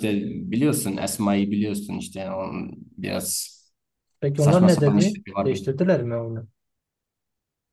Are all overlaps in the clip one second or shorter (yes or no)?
no